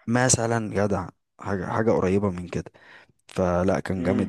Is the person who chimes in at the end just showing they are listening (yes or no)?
yes